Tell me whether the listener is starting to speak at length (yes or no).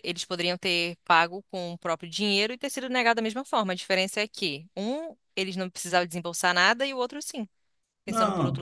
yes